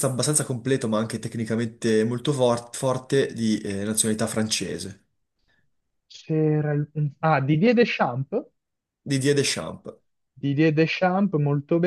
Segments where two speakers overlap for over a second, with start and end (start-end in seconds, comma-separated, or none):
none